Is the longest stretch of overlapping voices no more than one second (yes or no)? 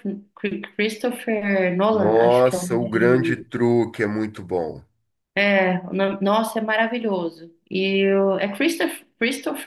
no